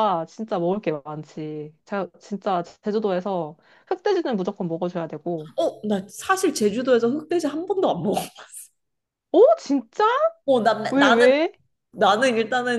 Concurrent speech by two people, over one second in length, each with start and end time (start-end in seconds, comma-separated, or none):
none